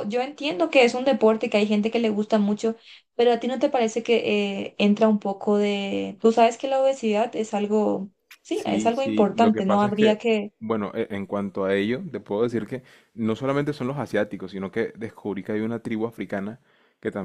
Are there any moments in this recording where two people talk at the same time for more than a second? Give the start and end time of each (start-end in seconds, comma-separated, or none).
8.5-10.2